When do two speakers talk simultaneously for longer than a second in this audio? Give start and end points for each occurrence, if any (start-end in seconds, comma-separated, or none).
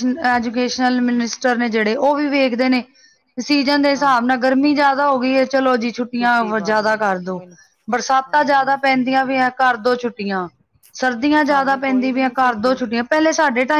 11.5-12.8